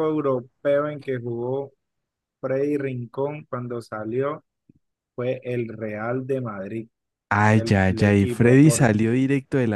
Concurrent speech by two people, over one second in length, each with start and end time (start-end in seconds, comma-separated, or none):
7.5-8.9